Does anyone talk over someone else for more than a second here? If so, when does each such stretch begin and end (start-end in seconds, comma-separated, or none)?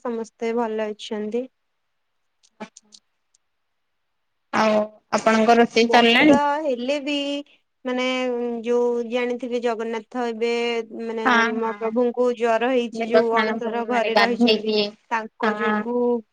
13.0-14.7